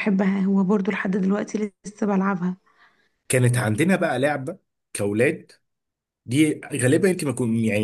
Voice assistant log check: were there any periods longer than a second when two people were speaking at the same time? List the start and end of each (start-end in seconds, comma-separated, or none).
none